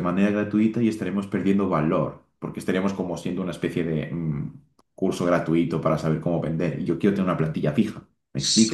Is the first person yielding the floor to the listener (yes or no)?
yes